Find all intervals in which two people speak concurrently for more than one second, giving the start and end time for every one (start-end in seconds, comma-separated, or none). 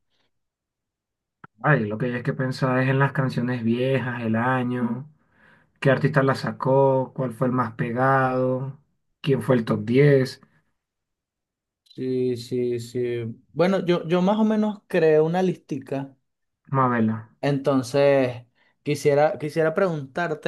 none